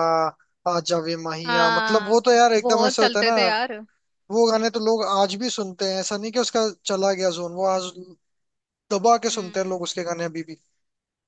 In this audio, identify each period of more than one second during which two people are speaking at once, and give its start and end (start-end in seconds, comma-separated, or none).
1.4-3.4